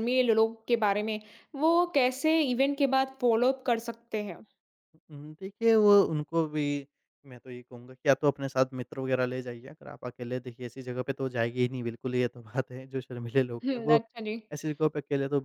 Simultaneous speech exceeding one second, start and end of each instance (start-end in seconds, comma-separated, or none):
none